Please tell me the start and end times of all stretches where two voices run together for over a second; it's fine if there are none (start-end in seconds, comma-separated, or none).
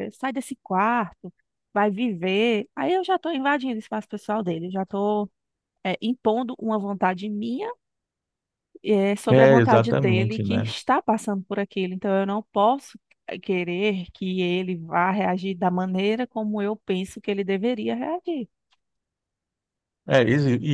9.3-10.7